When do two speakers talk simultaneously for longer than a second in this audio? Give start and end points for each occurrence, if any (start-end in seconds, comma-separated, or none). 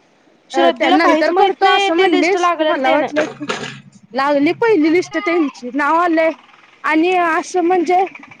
0.6-3.1